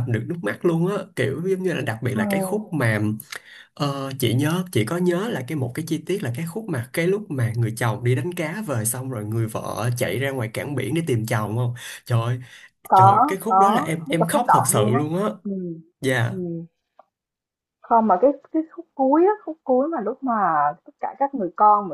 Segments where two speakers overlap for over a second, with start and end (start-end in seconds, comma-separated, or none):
12.9-15.0